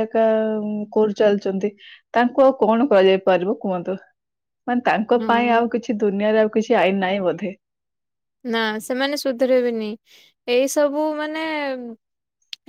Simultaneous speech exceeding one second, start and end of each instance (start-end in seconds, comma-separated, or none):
none